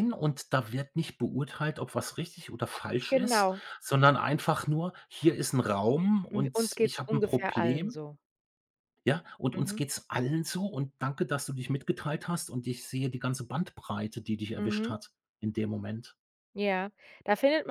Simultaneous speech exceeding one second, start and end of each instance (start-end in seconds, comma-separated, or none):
6.3-8.0